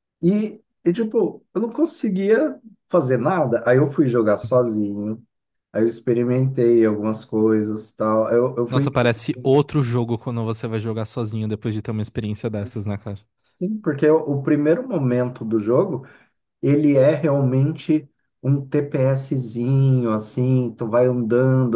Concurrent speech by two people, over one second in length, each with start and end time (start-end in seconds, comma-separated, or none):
none